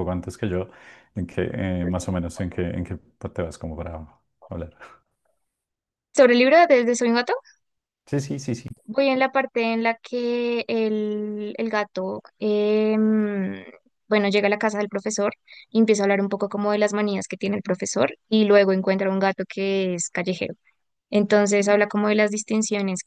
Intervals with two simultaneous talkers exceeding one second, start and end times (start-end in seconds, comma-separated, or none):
none